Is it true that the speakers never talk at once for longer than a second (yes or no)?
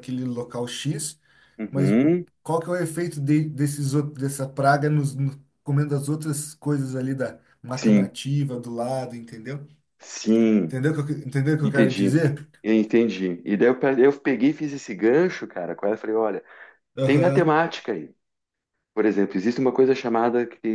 yes